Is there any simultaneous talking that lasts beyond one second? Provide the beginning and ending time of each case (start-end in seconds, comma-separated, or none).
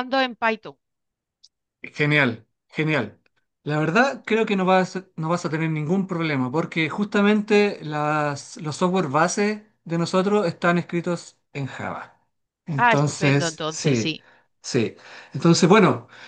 12.8-14.2